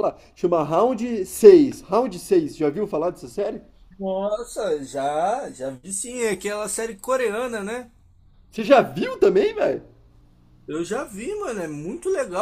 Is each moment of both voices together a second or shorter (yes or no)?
yes